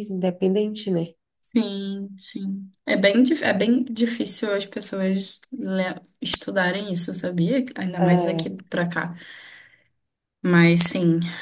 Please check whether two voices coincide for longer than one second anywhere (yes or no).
no